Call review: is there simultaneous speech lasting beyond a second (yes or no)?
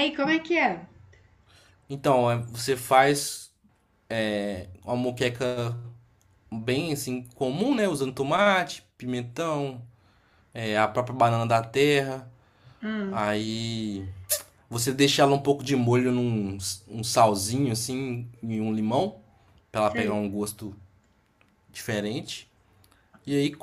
no